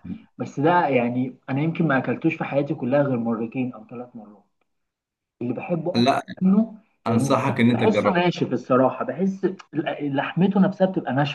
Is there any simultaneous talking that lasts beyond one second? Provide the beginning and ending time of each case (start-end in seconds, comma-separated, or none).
7.1-8.3